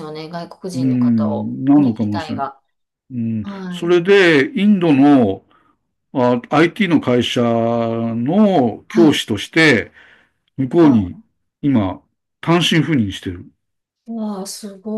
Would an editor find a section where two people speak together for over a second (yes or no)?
yes